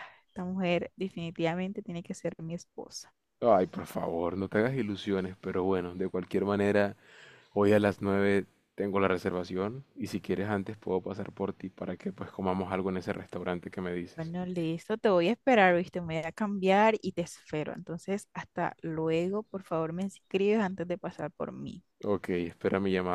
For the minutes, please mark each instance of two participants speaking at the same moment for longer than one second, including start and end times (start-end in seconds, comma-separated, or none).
none